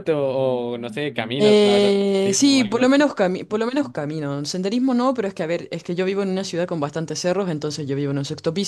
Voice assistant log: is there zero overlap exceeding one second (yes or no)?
no